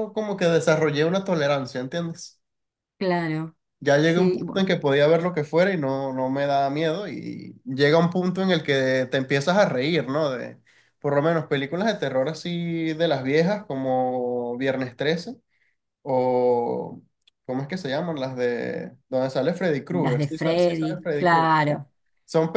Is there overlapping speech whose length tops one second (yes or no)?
yes